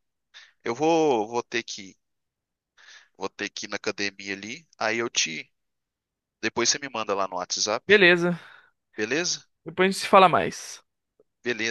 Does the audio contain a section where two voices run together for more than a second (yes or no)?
no